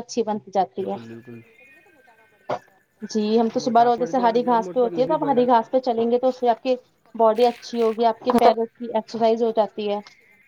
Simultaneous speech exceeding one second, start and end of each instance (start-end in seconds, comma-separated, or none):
3.6-5.5